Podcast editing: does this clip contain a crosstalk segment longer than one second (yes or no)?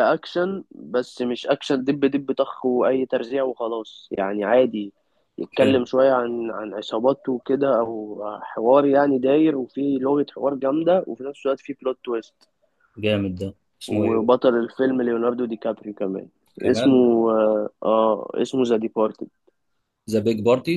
no